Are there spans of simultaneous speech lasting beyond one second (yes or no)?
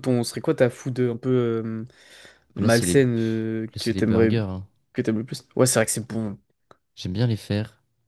yes